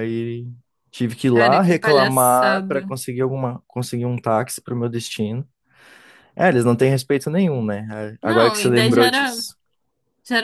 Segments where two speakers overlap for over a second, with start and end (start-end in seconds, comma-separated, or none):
1.3-2.9, 8.2-9.4